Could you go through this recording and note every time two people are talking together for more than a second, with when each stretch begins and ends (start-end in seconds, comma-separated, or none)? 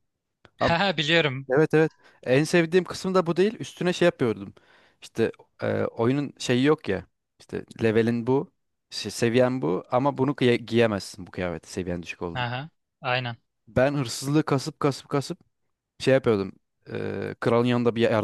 none